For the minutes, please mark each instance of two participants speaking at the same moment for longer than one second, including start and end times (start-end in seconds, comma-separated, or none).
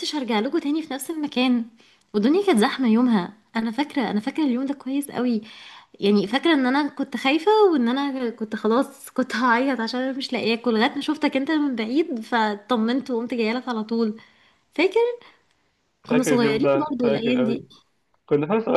16.1-17.6